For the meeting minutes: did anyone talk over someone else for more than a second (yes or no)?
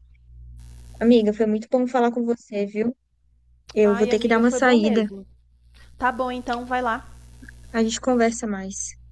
yes